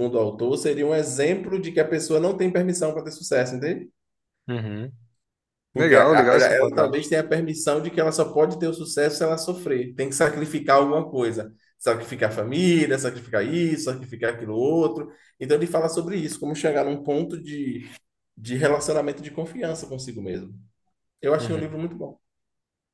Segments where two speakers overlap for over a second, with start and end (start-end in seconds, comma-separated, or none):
5.8-7.1